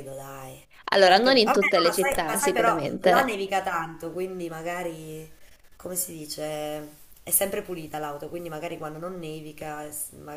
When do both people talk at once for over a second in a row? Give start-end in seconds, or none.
1.1-3.3